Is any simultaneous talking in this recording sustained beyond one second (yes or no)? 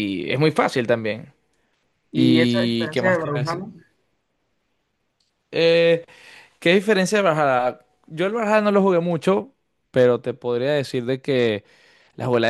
yes